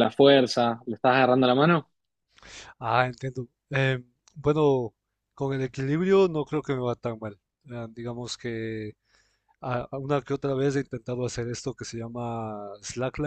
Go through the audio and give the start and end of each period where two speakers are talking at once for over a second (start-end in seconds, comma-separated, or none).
none